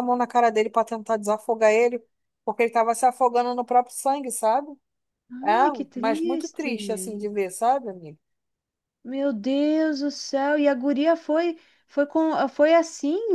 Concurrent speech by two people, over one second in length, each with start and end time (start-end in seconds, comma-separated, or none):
5.6-7.3